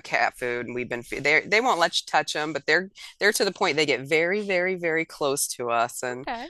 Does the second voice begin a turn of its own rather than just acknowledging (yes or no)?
no